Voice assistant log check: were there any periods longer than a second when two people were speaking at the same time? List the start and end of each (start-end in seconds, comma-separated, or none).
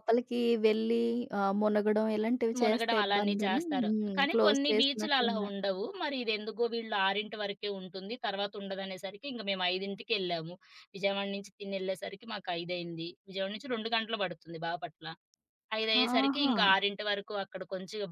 2.6-5.5